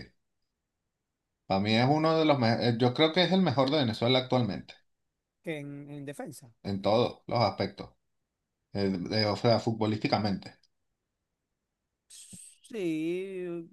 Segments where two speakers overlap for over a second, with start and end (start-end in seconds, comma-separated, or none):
none